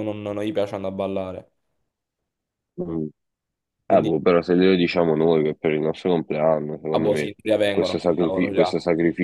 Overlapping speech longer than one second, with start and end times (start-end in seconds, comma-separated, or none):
6.9-8.7